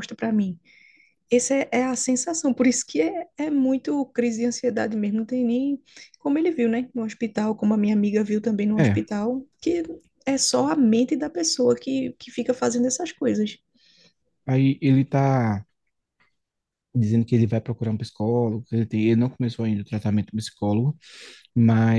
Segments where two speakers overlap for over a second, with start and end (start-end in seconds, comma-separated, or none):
none